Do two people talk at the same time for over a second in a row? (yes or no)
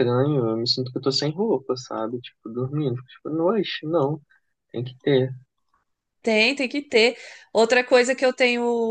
no